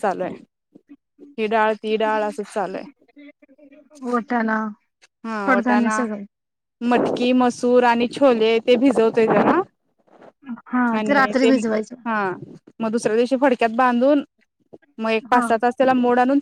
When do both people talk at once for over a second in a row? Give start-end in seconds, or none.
none